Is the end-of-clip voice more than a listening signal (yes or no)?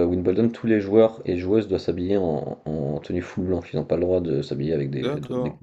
yes